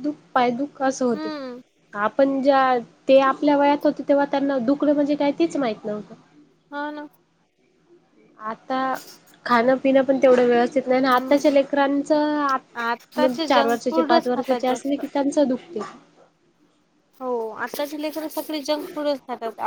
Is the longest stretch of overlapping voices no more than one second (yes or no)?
no